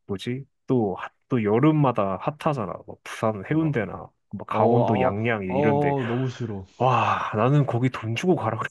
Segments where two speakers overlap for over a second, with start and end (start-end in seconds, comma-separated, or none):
4.5-6.0